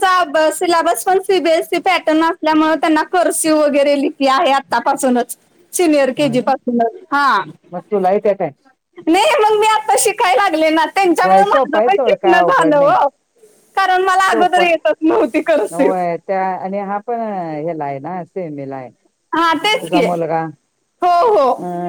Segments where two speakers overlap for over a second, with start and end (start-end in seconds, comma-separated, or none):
11.2-12.9